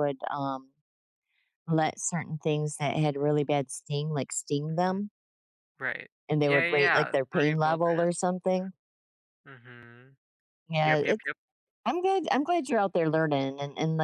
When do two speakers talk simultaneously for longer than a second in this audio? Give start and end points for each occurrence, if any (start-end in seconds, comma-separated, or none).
6.3-8.1